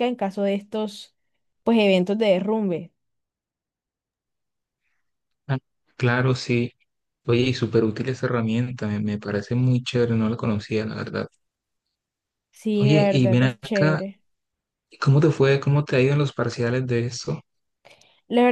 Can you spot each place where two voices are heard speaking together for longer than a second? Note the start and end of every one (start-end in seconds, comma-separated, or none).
12.8-14.0